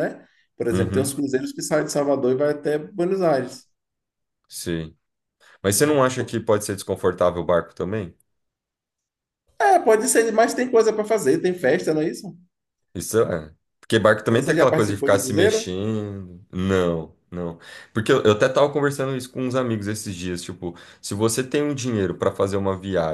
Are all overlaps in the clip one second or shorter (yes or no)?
no